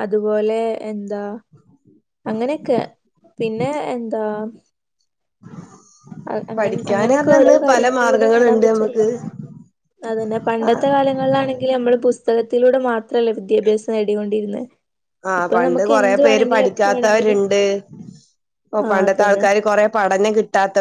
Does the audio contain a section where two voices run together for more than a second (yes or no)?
yes